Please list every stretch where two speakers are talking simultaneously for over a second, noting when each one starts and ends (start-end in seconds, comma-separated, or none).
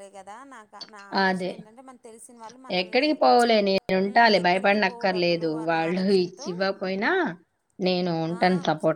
4.0-6.5